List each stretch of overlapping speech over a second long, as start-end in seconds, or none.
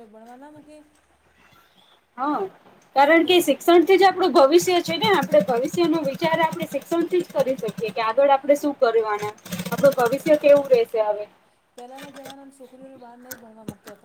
none